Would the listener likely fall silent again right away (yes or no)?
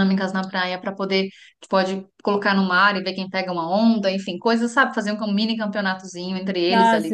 no